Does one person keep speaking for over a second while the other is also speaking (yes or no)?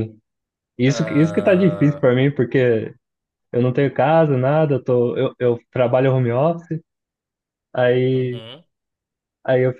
yes